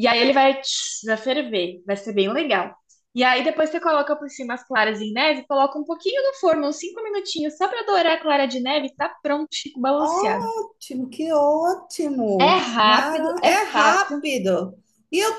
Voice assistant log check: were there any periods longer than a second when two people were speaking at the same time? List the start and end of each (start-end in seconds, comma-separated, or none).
12.4-14.2